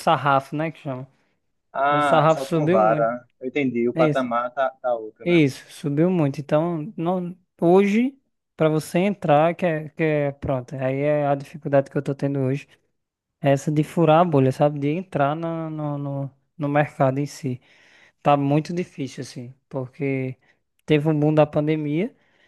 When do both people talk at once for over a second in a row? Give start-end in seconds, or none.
1.9-3.1